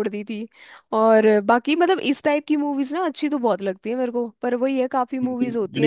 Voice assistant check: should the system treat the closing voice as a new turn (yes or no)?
yes